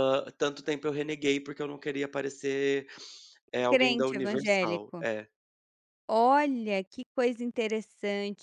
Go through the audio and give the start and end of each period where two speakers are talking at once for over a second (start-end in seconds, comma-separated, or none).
3.7-5.0